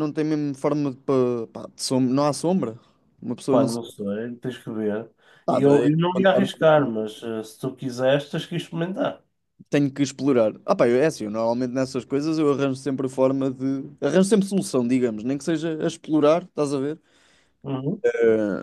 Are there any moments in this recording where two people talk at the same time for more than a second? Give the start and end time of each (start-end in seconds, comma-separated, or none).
5.5-6.9